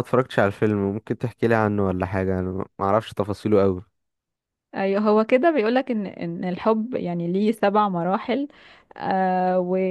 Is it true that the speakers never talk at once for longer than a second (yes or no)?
yes